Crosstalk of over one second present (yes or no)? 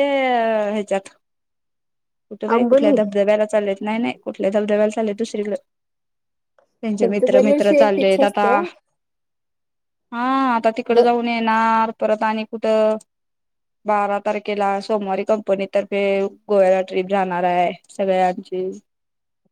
yes